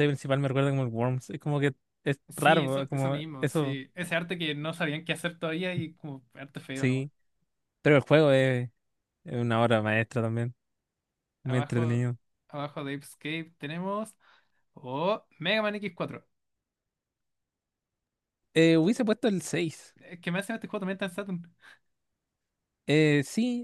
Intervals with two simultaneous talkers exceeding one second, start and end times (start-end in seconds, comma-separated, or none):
2.3-3.8